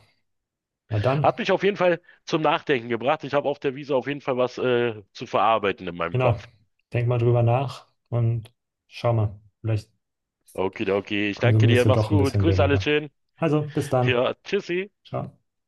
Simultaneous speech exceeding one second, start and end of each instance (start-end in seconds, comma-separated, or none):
11.3-12.9